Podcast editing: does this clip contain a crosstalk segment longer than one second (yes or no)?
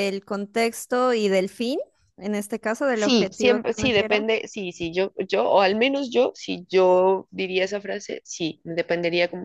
yes